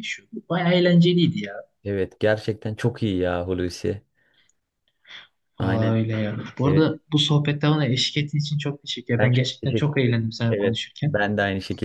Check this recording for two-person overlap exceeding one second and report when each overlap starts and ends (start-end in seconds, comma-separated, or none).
9.2-11.2